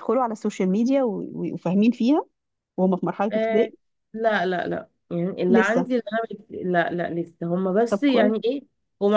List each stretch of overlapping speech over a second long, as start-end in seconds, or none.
none